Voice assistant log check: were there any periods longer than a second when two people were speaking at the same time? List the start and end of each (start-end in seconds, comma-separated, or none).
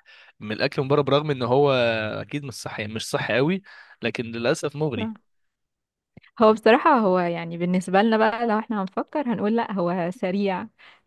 none